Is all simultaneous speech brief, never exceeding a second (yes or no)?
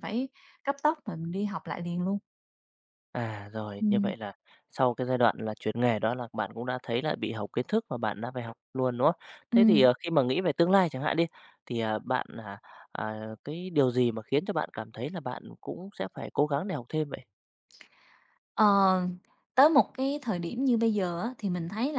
yes